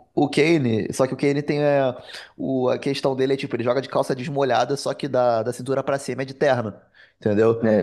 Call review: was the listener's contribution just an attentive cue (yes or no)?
yes